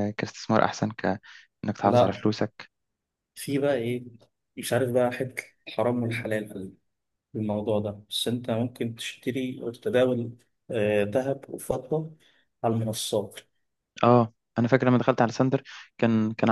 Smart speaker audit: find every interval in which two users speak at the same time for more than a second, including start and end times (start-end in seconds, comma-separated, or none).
none